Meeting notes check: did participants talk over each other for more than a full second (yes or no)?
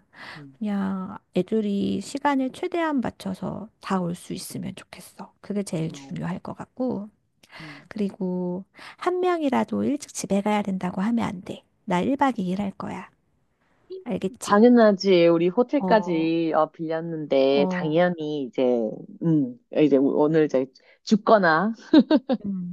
no